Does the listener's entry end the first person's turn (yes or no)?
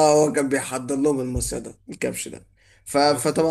no